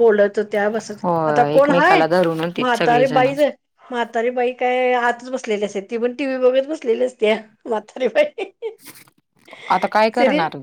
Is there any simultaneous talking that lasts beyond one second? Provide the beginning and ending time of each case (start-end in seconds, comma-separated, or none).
1.0-3.3